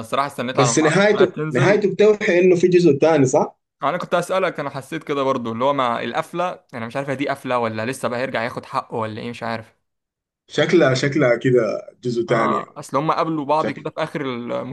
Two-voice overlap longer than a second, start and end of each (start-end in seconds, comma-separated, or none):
0.5-1.9